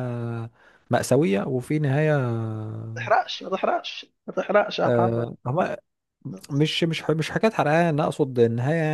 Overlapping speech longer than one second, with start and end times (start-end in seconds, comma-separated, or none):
none